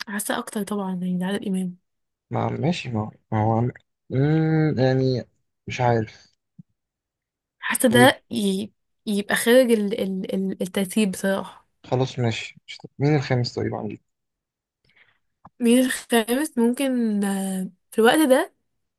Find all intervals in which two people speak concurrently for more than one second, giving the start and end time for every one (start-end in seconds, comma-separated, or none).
none